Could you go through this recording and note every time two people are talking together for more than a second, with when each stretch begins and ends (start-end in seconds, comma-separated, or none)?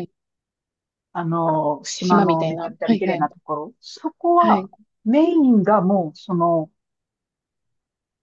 2.0-3.3